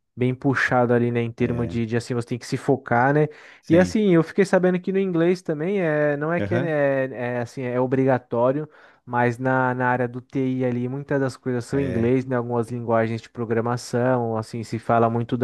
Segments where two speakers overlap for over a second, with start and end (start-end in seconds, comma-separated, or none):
none